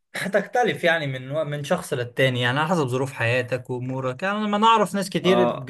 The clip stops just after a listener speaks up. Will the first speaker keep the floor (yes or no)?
yes